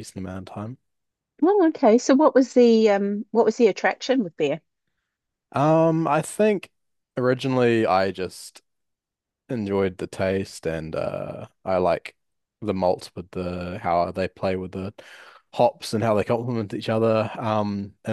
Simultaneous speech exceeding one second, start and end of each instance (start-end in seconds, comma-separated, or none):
none